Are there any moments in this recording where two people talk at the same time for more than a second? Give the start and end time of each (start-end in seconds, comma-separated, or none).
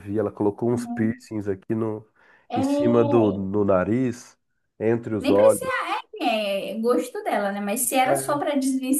none